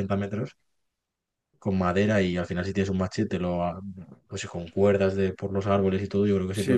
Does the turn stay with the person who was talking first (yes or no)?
no